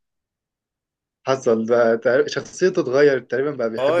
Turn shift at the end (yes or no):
yes